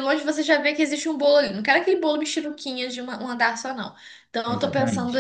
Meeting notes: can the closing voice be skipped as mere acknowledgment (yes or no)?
yes